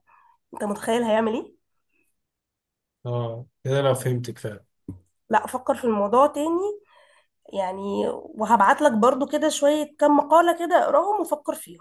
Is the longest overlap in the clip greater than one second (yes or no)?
no